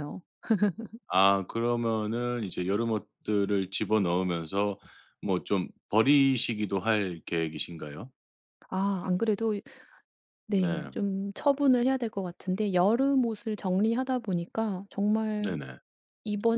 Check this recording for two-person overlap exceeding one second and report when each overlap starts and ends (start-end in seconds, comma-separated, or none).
none